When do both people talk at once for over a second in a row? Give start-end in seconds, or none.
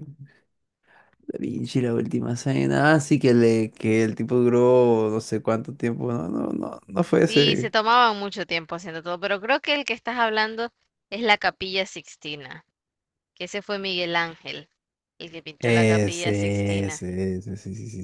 15.6-17.0